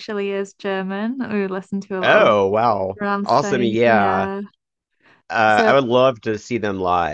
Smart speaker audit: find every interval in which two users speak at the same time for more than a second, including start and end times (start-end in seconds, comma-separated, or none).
3.0-4.3